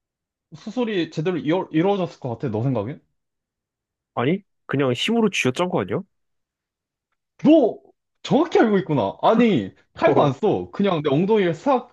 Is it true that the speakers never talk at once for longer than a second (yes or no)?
yes